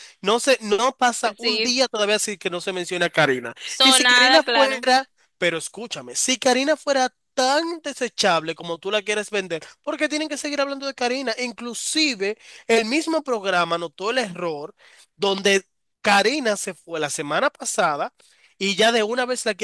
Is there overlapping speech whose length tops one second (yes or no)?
yes